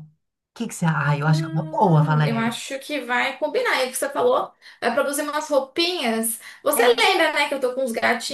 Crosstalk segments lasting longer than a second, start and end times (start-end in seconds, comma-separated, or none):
1.2-2.5